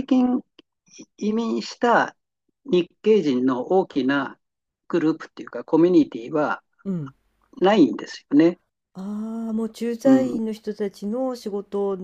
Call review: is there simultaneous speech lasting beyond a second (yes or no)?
no